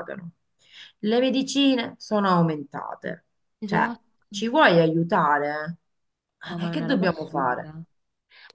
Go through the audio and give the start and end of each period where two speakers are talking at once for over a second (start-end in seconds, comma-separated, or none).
6.4-7.7